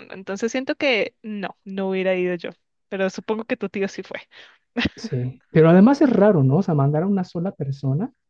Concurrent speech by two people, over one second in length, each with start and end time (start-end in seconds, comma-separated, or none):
none